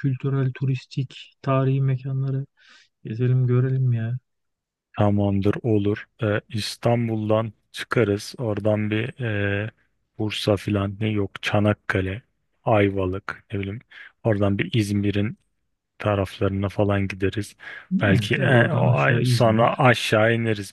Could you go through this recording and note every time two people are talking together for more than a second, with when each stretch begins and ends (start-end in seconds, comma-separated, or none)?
18.0-19.9